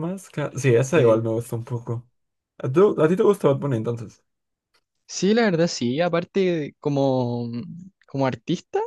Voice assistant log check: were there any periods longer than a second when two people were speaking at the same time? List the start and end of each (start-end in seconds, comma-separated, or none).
none